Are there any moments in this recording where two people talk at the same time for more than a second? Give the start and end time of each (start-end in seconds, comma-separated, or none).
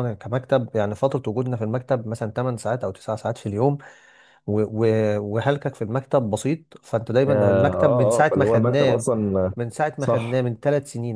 7.3-9.0